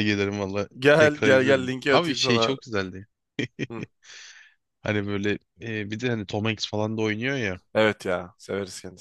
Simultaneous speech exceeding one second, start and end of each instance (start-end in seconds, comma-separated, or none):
0.8-2.6